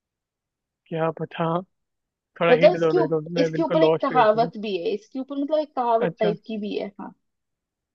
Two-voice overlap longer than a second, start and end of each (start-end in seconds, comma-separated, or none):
2.5-4.5